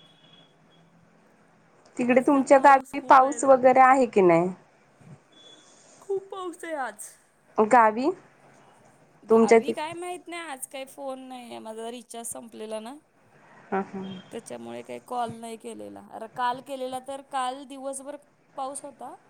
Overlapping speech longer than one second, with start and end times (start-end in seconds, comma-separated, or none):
2.1-3.5